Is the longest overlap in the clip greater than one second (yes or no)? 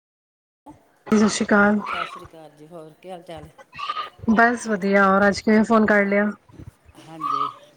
no